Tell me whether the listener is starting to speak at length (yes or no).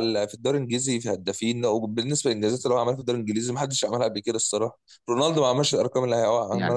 yes